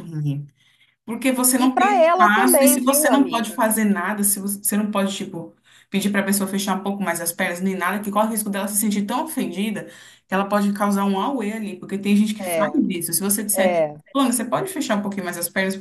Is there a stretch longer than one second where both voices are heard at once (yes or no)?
yes